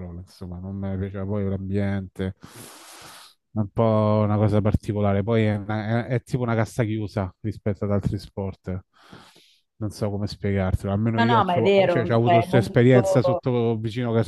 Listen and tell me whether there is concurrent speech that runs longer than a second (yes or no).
yes